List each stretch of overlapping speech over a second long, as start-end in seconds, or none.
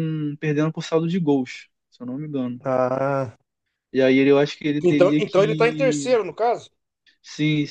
4.8-6.1